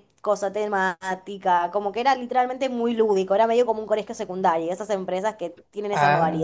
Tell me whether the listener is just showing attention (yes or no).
no